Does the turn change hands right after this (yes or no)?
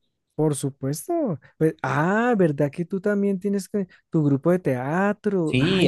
yes